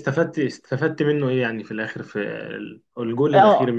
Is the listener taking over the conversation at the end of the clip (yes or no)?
yes